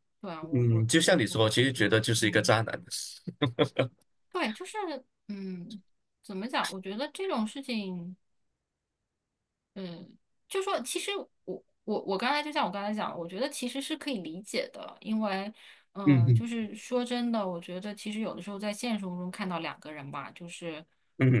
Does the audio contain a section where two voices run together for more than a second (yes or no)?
yes